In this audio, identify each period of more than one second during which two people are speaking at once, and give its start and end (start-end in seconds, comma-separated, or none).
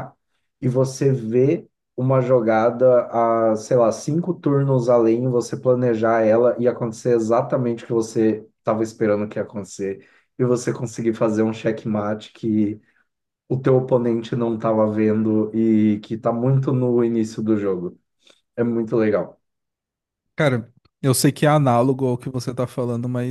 none